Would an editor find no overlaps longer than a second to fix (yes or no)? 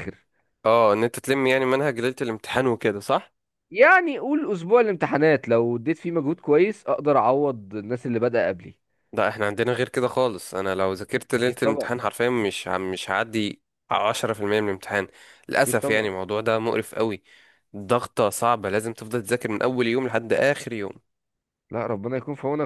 yes